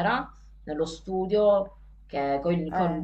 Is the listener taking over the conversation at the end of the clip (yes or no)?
no